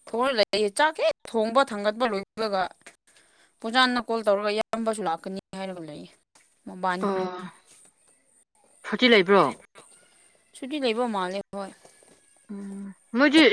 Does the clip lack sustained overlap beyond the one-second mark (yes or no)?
yes